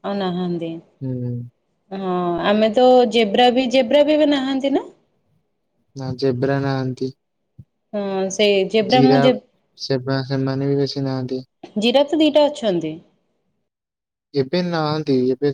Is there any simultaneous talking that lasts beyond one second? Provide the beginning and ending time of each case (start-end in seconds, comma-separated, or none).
none